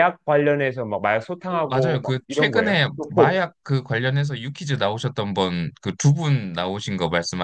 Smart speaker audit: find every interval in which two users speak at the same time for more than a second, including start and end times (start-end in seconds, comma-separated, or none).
1.5-3.4